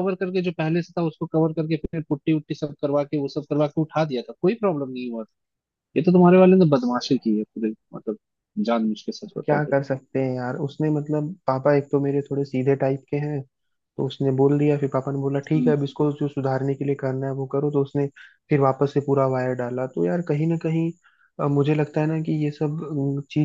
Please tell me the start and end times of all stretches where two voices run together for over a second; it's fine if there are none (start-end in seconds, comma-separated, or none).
none